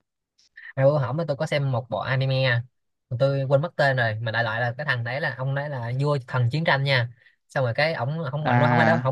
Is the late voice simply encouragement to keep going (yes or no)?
yes